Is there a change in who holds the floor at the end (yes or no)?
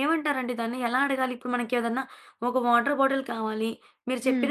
no